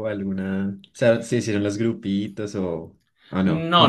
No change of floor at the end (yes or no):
no